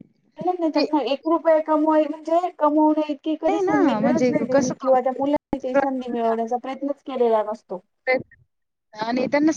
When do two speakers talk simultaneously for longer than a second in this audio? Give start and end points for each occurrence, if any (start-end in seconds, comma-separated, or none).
3.5-5.0